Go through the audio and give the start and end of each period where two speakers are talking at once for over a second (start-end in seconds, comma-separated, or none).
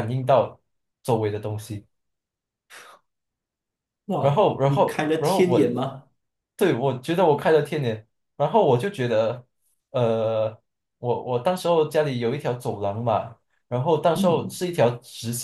4.2-5.7